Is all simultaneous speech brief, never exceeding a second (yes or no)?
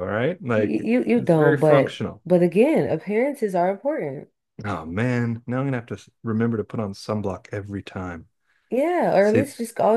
no